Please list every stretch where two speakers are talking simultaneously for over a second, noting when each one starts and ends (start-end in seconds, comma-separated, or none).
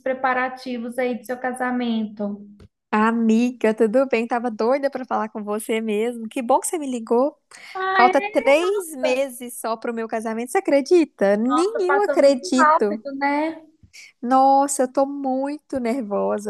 11.4-13.0